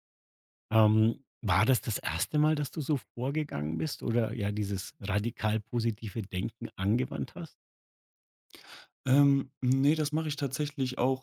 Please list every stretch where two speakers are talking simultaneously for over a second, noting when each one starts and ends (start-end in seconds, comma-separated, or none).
none